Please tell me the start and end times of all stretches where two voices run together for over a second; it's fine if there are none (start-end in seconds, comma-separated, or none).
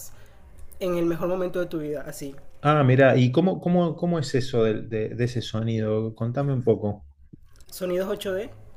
none